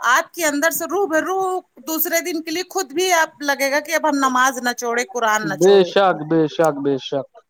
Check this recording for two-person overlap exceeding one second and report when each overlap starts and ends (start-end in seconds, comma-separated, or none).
none